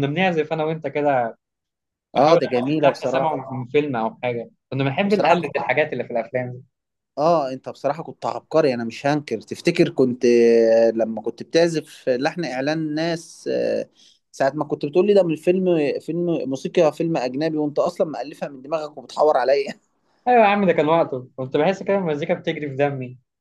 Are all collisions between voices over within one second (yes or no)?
no